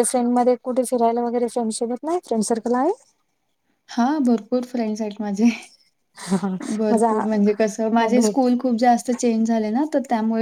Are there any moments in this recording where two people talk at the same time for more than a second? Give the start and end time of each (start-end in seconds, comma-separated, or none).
none